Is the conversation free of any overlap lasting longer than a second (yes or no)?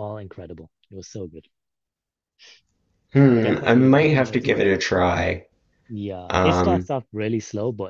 no